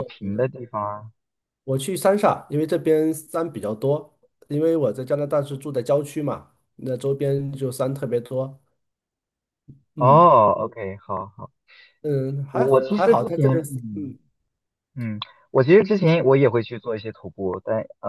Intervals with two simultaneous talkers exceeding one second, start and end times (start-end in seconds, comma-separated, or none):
12.5-14.1